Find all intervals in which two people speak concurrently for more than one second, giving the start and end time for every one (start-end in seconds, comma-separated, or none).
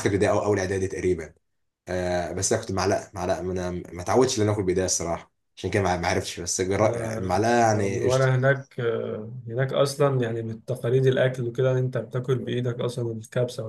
6.8-8.1